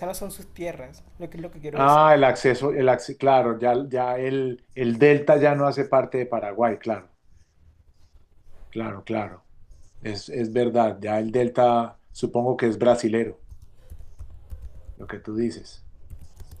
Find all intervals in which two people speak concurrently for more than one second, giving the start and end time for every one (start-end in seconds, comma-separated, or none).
none